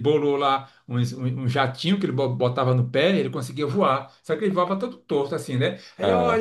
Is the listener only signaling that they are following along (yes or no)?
yes